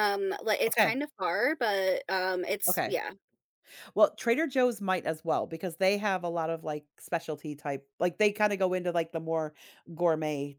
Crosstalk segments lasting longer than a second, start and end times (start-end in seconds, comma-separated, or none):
none